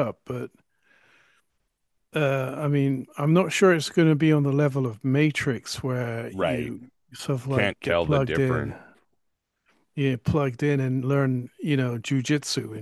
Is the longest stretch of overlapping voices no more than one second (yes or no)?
no